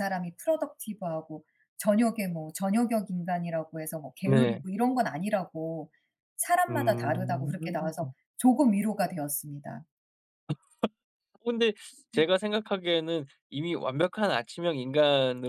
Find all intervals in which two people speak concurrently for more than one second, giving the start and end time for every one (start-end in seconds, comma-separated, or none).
6.7-8.1